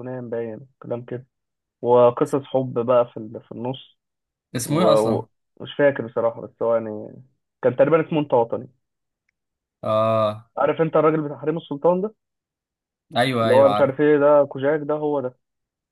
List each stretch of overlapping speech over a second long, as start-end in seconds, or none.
none